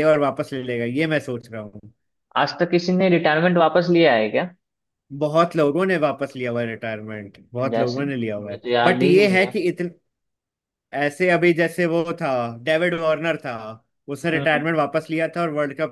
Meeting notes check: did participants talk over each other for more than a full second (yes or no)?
yes